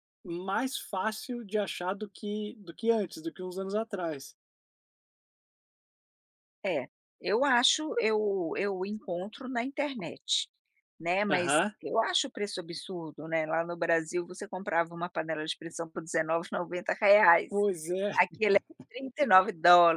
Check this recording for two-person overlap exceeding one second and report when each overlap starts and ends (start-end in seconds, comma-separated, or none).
none